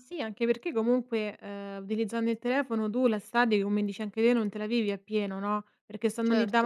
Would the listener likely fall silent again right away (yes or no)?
yes